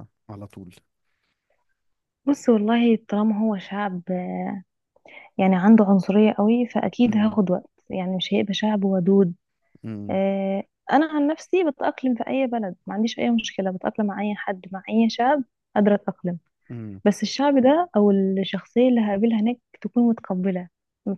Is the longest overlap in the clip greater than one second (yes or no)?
no